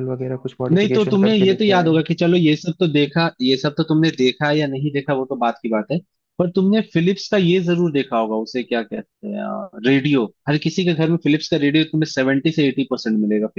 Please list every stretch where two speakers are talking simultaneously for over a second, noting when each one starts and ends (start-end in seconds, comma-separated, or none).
0.7-2.0